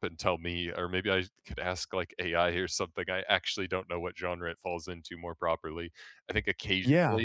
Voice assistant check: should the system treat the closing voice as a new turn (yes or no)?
no